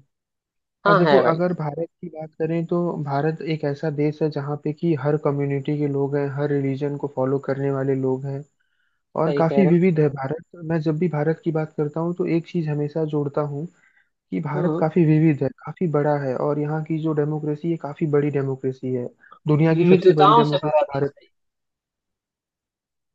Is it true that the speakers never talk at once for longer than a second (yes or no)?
no